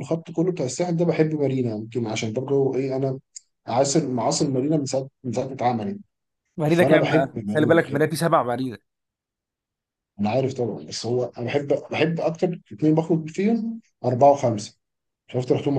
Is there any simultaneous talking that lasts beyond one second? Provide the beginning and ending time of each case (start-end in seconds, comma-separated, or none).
6.7-8.0